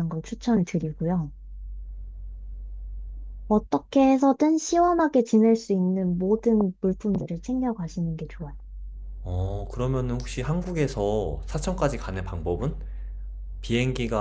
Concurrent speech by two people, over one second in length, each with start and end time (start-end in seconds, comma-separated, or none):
none